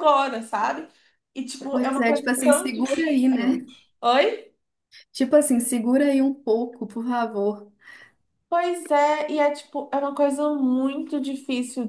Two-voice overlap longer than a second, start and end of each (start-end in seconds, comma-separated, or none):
1.7-3.6